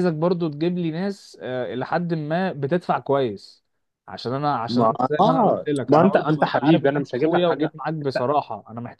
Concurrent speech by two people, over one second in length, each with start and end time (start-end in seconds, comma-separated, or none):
4.7-8.3